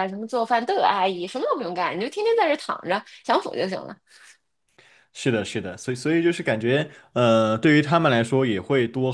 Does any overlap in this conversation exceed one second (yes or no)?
no